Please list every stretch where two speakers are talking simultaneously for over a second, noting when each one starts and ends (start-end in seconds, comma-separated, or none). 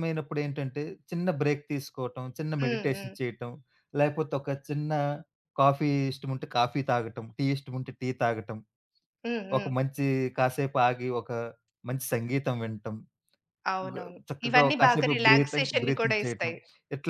13.9-16.5